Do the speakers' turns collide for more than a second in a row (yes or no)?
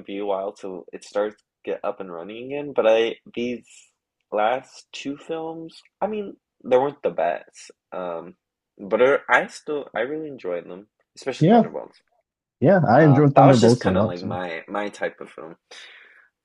yes